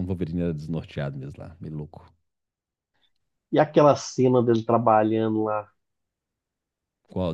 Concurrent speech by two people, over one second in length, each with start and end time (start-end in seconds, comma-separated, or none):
none